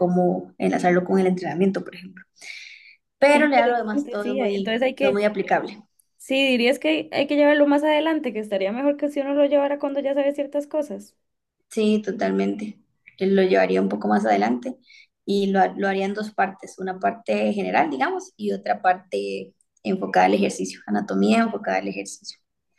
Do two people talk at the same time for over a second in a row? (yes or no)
yes